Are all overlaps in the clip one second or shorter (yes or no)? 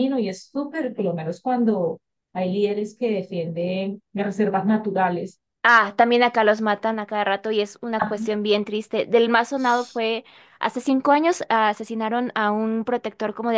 yes